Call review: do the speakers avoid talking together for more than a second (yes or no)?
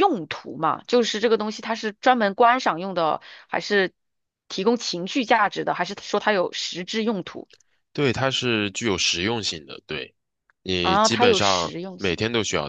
no